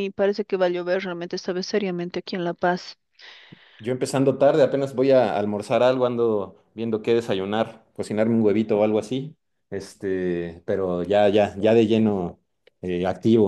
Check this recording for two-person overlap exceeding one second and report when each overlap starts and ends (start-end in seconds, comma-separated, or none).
none